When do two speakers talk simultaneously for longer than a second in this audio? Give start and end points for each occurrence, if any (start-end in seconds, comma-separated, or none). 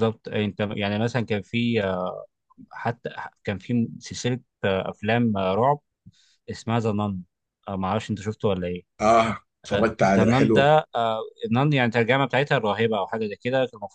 none